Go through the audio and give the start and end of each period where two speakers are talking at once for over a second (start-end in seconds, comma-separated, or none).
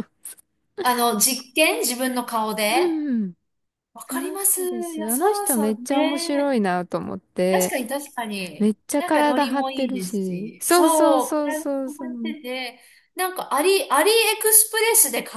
4.0-6.6, 8.6-12.3